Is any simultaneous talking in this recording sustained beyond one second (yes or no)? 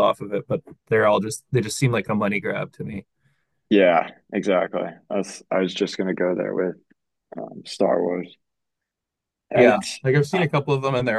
no